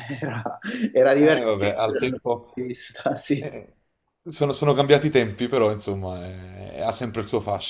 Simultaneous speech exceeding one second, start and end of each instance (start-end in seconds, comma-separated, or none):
1.2-2.5